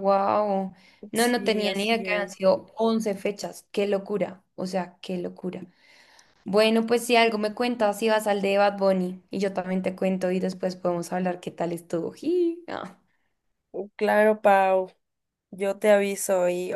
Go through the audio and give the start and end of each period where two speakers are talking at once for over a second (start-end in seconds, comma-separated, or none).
1.1-2.4